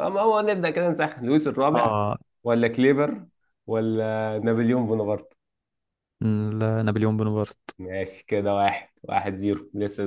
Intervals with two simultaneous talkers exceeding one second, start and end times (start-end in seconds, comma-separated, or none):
none